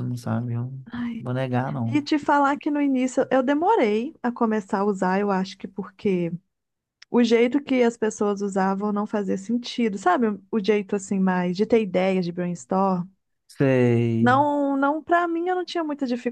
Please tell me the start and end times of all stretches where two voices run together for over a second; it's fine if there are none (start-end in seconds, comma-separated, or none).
none